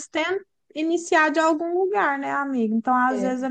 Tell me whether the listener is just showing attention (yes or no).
yes